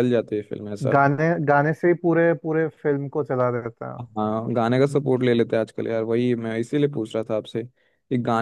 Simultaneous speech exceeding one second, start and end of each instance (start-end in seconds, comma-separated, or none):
none